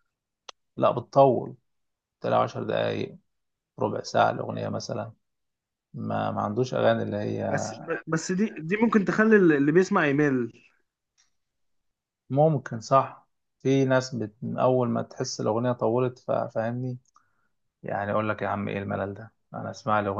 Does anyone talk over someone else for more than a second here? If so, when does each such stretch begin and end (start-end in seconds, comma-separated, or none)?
none